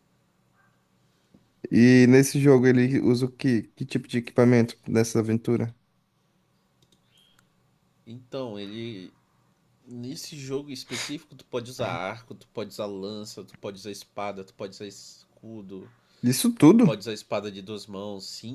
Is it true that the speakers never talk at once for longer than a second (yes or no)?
yes